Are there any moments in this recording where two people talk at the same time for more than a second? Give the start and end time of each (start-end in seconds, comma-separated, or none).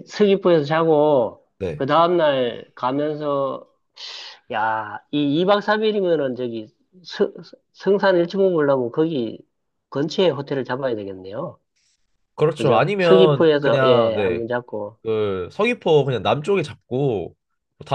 12.5-14.4